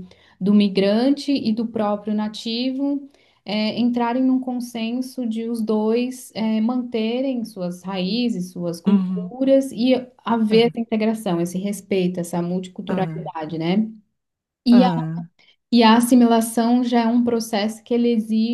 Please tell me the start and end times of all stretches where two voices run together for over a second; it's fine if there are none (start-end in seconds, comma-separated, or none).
none